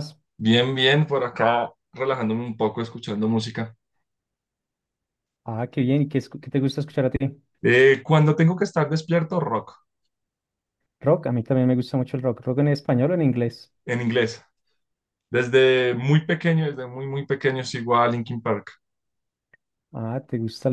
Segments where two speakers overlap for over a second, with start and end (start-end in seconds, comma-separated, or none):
none